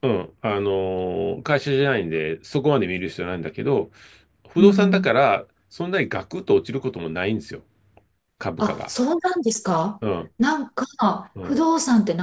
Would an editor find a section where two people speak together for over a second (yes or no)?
no